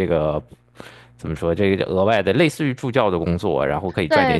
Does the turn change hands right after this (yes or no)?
yes